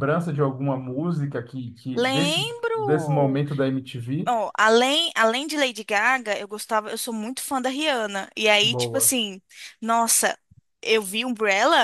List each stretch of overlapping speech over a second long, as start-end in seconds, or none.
1.9-3.4